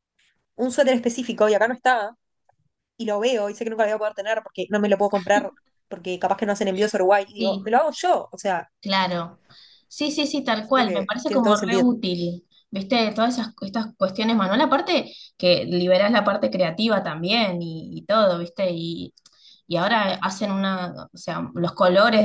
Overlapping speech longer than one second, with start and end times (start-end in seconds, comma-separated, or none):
10.6-11.8